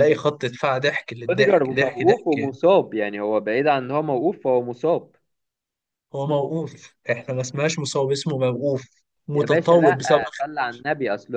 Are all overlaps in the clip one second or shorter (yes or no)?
no